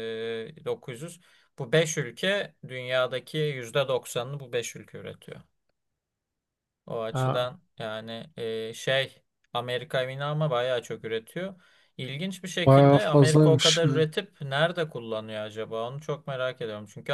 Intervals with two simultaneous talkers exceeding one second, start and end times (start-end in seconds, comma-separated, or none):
12.7-14.0